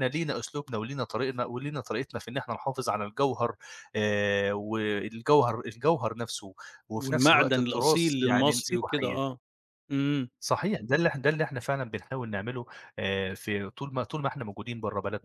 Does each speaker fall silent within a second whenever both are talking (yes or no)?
no